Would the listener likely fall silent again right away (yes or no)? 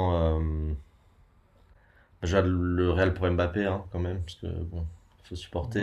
yes